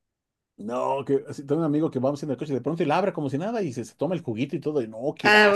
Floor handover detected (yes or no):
yes